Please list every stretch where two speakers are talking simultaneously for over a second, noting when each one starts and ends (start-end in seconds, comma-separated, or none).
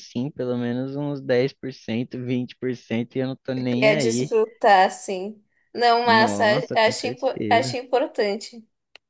6.0-7.8